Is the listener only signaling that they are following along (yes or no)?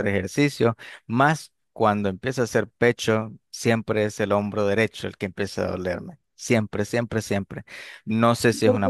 yes